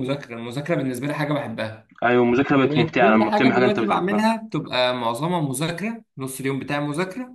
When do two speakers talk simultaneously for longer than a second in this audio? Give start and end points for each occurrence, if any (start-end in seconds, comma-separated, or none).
2.6-4.3